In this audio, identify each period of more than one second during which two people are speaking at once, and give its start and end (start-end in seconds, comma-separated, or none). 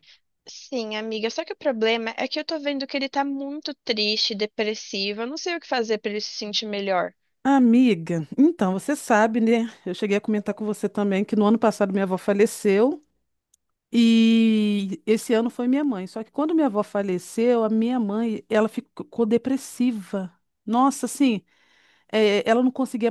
none